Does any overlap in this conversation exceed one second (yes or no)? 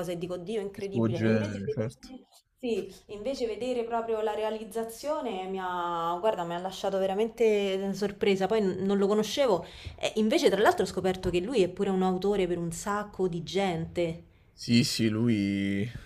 yes